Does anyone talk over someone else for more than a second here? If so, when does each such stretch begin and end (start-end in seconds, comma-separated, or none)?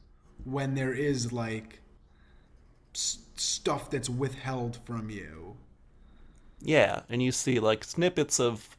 none